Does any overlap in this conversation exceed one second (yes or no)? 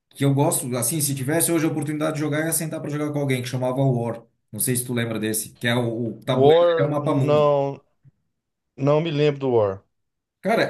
yes